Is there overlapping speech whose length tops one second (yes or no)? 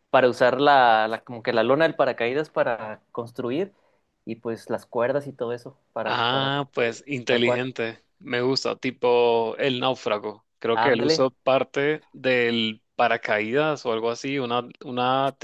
yes